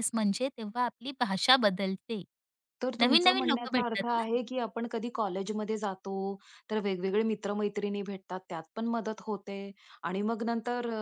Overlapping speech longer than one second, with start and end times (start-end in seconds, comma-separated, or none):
3.0-4.2